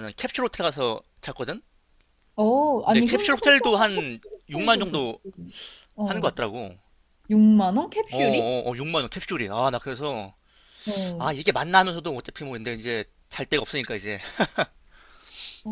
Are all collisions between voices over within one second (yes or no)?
no